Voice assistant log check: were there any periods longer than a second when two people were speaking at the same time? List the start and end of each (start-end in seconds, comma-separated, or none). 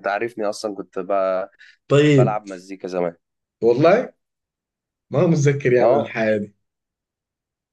none